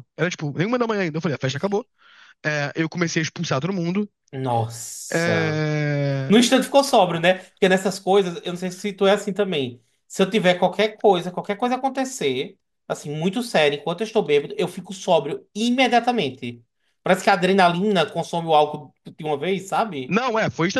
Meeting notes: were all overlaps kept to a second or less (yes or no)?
yes